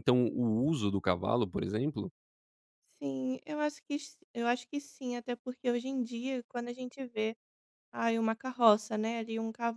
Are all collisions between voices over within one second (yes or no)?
yes